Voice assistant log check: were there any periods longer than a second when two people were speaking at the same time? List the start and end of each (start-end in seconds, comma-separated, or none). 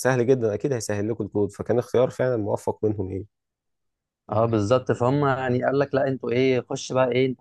none